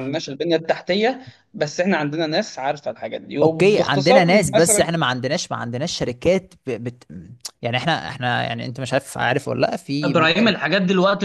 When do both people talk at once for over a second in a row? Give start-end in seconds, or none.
3.4-4.9